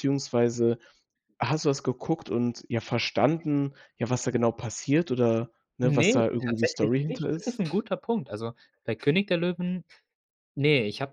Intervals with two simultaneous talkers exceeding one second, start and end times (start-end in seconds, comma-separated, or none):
5.8-7.5